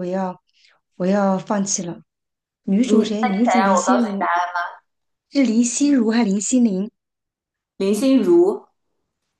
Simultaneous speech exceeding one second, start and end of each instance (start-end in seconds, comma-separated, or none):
2.8-4.2